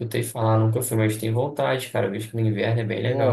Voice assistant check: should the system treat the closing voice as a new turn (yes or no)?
yes